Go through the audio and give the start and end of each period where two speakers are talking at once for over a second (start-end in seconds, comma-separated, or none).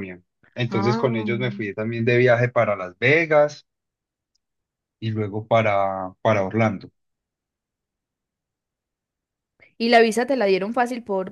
none